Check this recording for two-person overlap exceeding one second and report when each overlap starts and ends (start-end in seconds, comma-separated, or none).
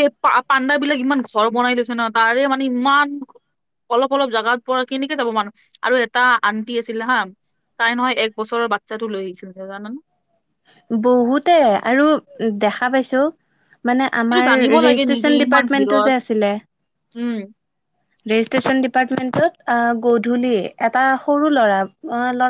14.3-16.1